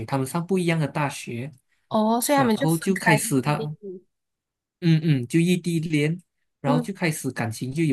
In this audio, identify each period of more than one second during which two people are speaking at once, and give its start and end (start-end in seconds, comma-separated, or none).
2.3-3.8